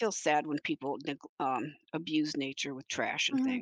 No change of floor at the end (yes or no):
no